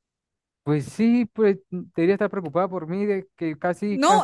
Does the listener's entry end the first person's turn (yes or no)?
yes